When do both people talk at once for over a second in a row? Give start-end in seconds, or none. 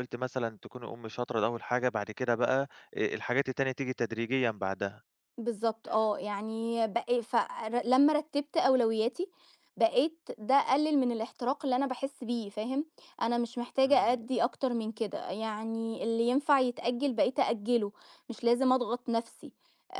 none